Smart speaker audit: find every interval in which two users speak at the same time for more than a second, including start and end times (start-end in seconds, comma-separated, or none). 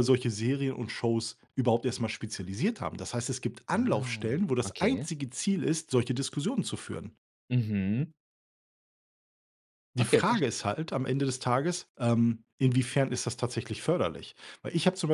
3.7-5.1